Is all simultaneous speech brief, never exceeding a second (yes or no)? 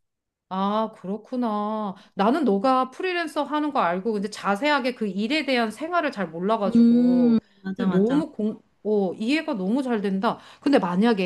no